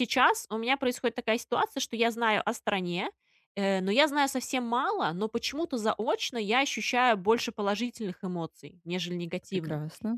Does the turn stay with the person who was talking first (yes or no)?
yes